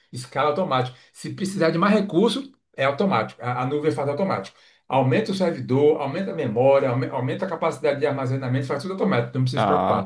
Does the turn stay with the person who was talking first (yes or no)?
no